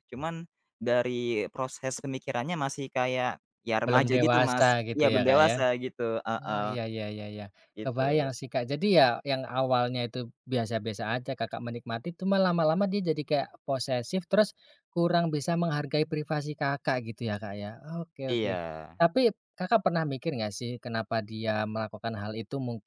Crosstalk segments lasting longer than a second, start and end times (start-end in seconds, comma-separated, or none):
3.9-5.5